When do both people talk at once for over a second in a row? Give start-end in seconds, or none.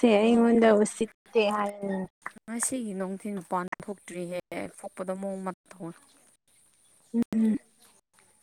none